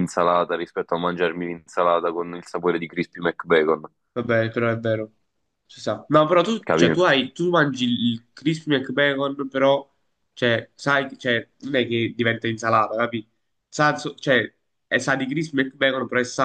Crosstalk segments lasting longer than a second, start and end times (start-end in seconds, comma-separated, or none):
none